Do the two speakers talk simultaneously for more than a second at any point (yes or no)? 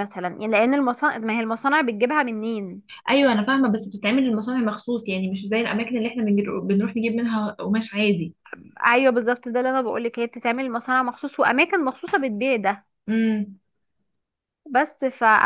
no